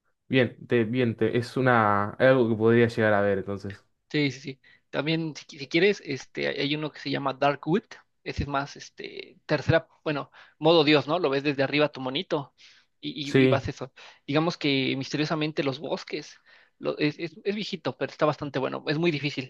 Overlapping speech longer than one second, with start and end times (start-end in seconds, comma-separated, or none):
none